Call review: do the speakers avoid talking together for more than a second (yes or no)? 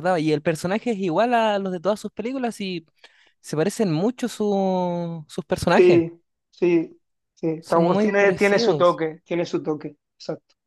no